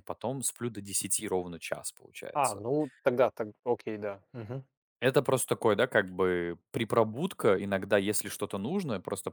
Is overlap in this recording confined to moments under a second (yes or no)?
yes